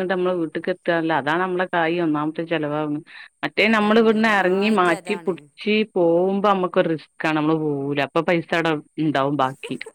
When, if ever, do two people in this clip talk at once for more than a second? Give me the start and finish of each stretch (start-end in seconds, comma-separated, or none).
3.7-5.4